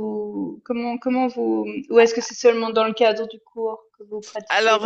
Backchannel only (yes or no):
no